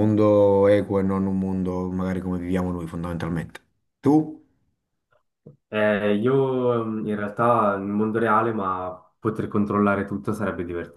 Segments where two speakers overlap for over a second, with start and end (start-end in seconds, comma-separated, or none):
none